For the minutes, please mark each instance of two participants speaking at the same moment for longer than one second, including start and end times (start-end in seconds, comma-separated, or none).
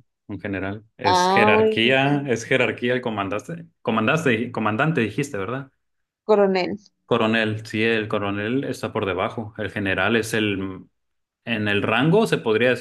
1.0-2.3